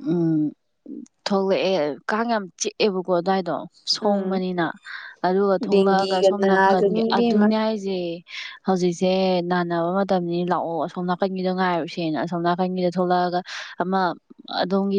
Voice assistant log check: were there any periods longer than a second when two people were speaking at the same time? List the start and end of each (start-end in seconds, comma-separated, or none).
5.7-7.5